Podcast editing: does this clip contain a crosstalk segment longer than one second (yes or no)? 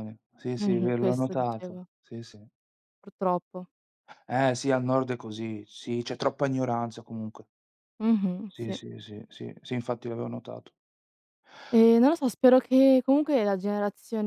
yes